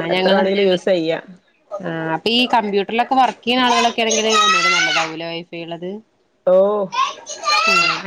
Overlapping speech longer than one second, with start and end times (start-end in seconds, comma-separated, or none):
none